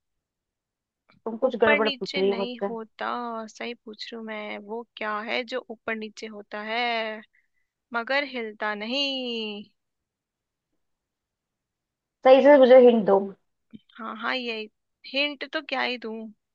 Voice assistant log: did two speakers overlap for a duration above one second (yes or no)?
yes